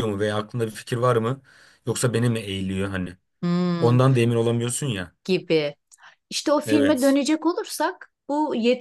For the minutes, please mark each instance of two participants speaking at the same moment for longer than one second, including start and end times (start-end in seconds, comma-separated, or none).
none